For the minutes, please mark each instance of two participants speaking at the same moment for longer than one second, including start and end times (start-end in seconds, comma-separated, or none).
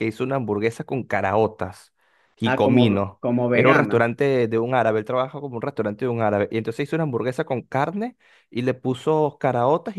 2.4-4.1